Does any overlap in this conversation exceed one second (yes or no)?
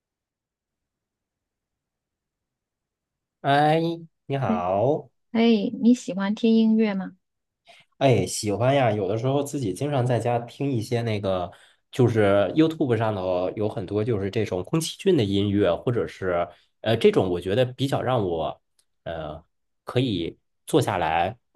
no